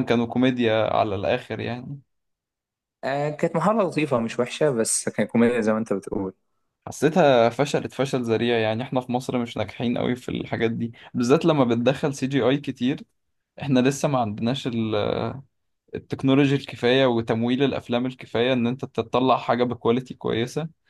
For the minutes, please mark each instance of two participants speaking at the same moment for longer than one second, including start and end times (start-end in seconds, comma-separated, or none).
none